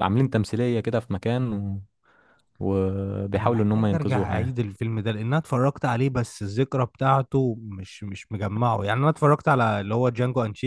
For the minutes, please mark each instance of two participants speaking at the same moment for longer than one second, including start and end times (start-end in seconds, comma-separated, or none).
3.4-4.6